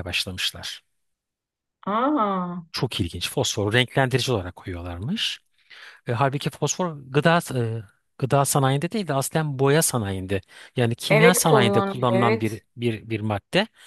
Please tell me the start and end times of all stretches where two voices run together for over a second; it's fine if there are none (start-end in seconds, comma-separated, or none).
11.1-12.4